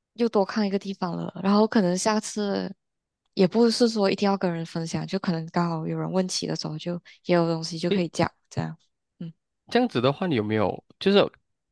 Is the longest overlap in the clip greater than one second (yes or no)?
no